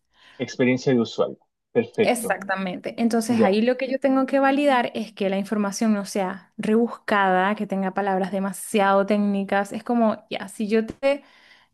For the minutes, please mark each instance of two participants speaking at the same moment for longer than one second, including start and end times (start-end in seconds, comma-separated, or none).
none